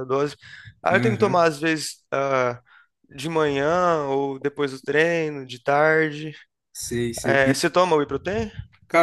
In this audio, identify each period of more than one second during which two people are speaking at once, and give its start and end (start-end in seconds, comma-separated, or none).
none